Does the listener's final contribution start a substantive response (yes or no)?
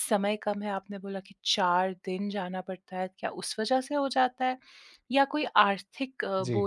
no